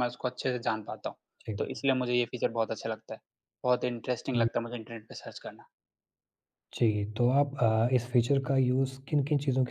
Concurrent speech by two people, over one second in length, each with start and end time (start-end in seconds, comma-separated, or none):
none